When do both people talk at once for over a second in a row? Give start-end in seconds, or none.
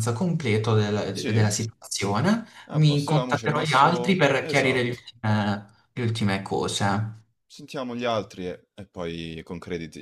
2.8-5.0